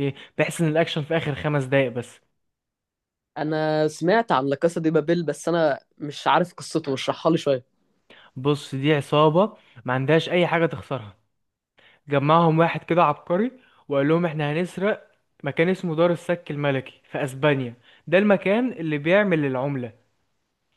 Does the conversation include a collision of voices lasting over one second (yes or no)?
no